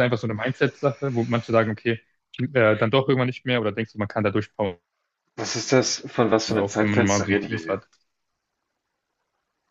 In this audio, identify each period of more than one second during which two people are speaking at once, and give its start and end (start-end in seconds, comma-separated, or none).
6.5-7.8